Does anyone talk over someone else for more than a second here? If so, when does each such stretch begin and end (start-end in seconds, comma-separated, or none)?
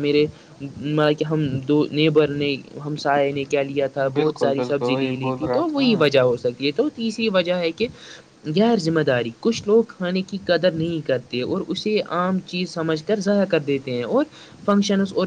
4.2-5.8